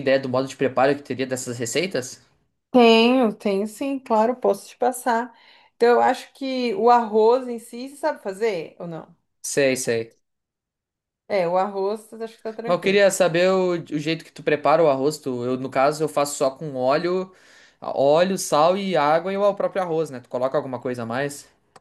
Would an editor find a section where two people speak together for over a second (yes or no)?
no